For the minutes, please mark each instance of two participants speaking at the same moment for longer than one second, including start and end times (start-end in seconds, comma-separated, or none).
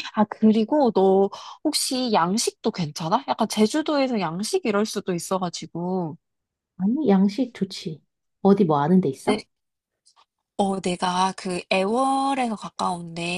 none